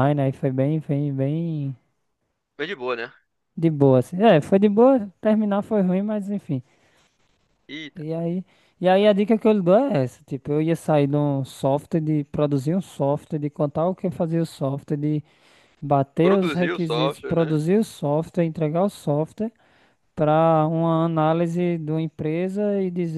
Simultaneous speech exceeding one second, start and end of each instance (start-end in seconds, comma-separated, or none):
16.2-17.6